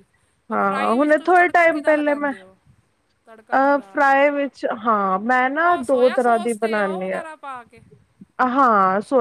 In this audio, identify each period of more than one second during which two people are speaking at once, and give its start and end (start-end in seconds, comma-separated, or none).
0.5-2.3, 5.6-7.2